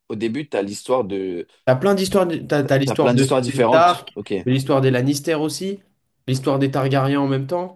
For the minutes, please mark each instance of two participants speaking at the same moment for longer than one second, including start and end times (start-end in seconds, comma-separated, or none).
2.8-4.3